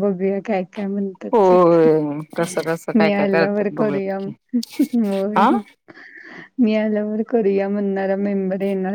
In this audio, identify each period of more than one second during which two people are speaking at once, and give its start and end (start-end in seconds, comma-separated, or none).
3.0-4.3